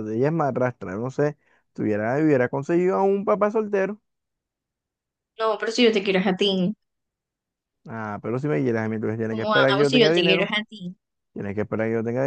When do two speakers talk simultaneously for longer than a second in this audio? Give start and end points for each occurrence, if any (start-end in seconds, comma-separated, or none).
9.3-10.5